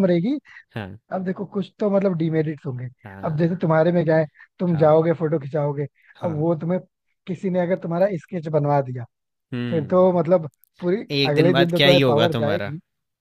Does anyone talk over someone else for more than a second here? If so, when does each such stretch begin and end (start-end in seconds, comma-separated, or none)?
11.2-12.7